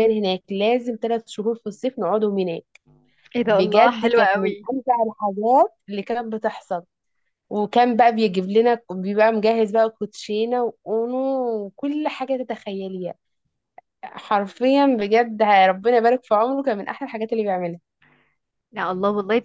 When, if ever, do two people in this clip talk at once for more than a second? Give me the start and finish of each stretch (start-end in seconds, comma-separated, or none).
3.4-4.7